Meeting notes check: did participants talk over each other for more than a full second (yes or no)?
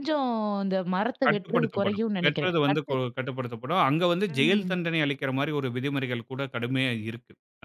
yes